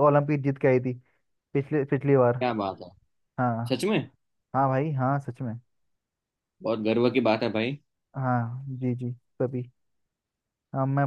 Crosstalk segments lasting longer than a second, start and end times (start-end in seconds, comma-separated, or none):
none